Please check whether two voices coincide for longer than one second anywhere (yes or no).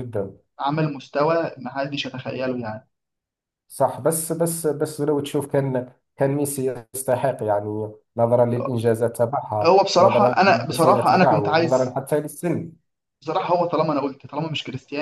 yes